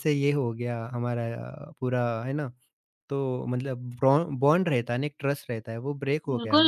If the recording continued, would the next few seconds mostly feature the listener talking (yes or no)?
yes